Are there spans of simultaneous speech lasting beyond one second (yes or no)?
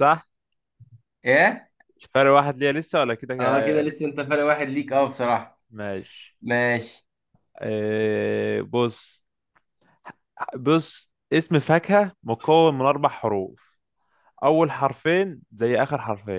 no